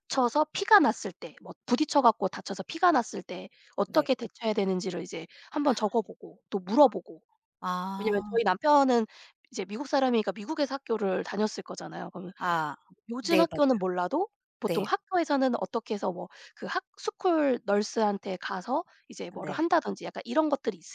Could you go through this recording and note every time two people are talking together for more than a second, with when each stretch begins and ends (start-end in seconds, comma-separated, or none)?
none